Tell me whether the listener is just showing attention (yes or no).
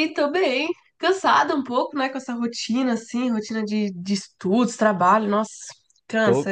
no